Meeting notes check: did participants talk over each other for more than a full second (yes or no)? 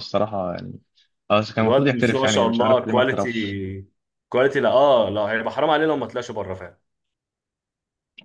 yes